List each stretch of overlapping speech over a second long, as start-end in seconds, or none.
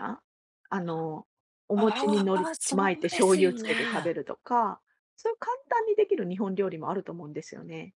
1.8-4.1